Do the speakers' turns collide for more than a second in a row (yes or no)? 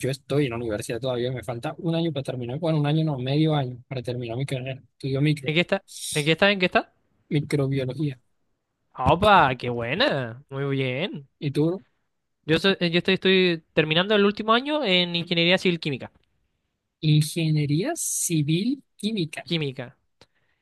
no